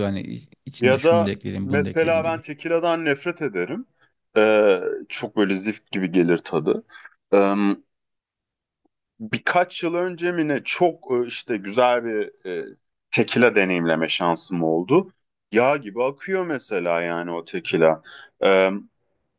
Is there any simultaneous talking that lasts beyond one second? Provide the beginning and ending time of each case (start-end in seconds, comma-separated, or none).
0.8-2.4